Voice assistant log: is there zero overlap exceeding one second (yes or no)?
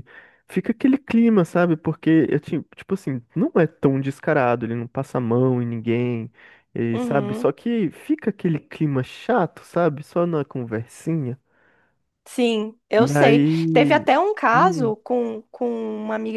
yes